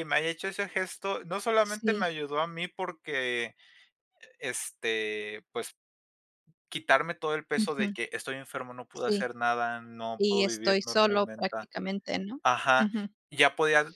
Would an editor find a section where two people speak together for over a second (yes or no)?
yes